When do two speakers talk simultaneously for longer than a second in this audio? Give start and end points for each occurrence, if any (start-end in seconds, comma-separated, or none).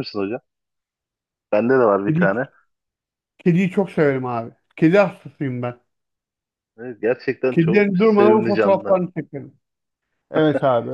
7.5-9.0